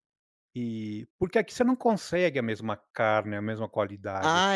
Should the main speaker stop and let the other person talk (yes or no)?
yes